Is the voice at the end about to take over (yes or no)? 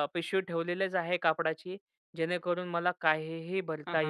yes